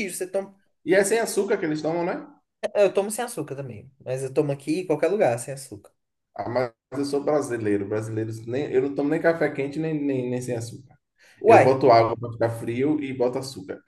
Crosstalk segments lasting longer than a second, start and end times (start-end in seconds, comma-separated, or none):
none